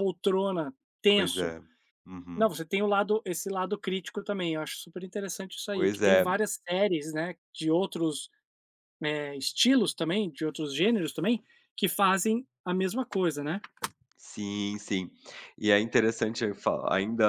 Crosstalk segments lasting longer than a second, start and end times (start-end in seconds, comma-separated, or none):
none